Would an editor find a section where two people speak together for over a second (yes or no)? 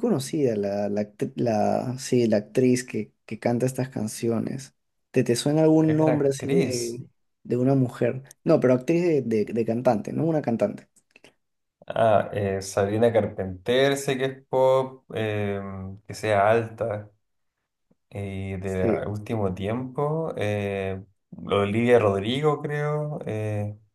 yes